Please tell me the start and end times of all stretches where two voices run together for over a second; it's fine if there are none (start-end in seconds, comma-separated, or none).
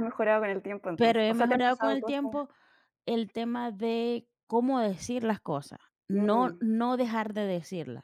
1.0-2.2